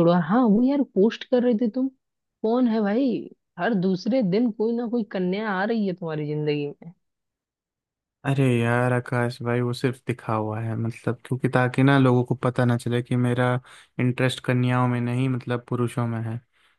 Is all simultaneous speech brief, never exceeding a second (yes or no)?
yes